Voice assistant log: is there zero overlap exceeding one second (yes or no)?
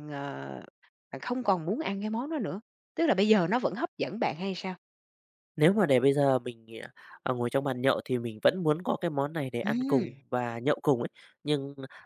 yes